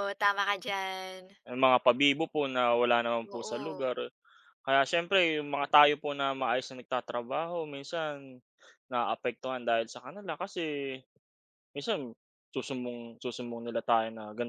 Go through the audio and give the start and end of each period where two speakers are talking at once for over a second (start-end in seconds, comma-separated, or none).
none